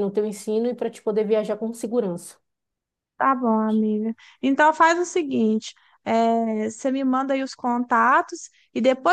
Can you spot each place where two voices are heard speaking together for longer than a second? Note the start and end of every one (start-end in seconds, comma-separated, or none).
none